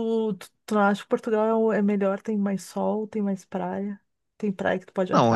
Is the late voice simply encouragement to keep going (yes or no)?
no